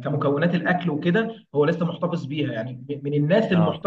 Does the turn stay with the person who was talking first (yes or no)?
yes